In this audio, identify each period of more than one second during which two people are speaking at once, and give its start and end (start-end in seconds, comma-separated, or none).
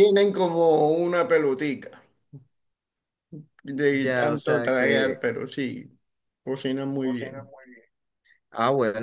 3.9-5.2